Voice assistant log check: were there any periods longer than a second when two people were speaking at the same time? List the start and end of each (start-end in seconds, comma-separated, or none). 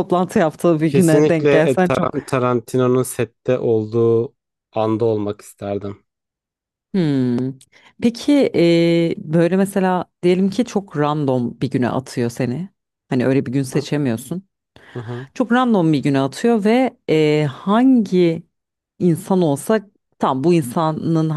0.8-2.2